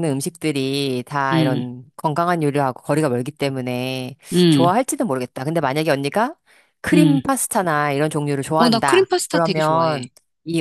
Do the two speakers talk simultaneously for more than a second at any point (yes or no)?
yes